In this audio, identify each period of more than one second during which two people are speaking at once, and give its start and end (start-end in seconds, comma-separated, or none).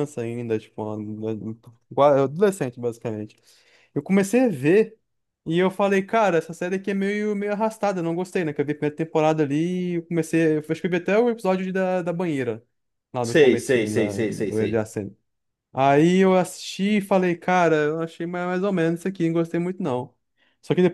13.2-14.9